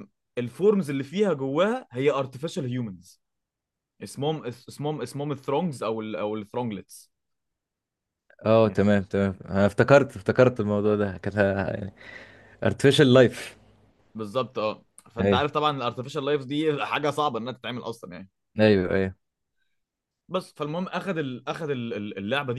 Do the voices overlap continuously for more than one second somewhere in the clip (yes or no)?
no